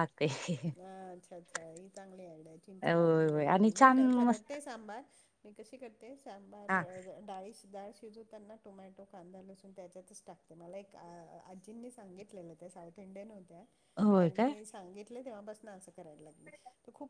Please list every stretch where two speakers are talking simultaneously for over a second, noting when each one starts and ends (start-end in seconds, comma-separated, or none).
2.8-4.5